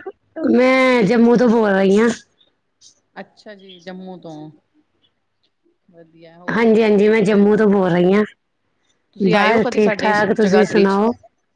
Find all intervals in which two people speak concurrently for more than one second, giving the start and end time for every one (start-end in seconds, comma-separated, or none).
9.3-11.0